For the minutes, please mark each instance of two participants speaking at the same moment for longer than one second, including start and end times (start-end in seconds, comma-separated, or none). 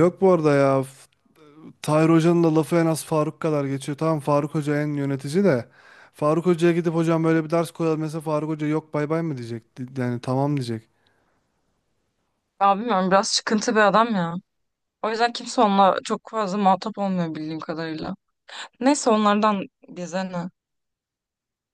none